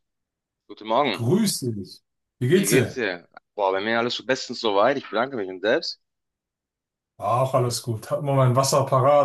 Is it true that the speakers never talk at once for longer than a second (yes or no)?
yes